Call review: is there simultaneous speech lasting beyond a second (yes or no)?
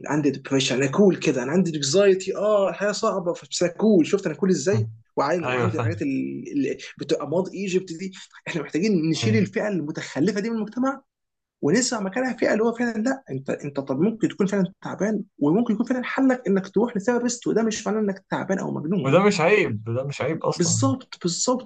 no